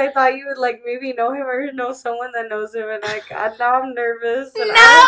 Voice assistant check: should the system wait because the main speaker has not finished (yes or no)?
no